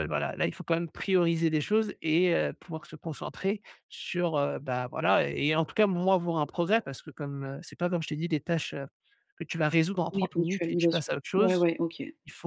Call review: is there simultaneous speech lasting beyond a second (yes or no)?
yes